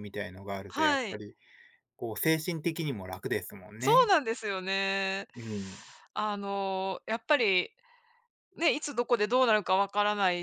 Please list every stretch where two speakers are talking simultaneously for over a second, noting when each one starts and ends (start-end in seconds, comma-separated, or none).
none